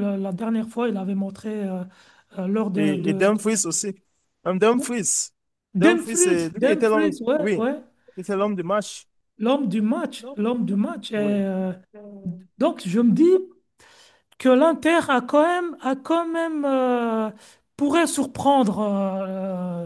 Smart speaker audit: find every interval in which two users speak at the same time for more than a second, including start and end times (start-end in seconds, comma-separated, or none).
5.8-7.7